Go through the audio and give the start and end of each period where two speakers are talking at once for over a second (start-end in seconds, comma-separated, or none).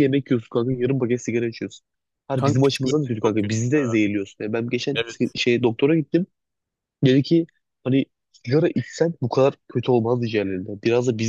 2.4-3.8